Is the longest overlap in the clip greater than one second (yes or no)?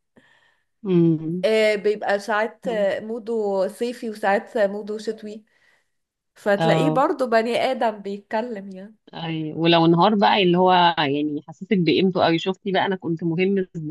no